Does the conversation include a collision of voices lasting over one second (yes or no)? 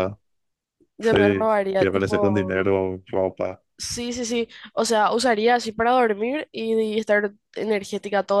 yes